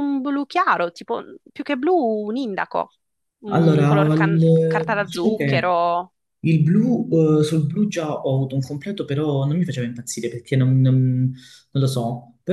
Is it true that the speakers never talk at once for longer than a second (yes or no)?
no